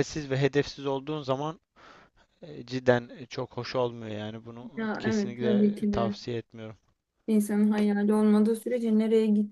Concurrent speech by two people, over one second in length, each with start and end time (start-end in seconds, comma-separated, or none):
4.8-6.1